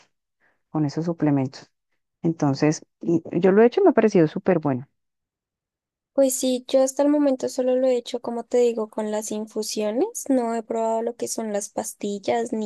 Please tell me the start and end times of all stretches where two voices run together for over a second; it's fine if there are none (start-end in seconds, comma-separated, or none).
none